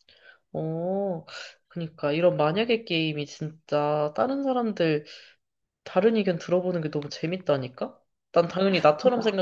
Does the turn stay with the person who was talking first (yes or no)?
yes